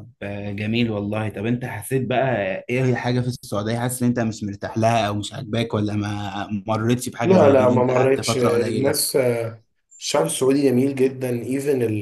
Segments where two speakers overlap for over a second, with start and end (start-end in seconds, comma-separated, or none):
7.2-8.9